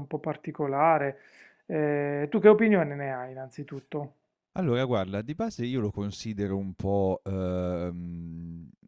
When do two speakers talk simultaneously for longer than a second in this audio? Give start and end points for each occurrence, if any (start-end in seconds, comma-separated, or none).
none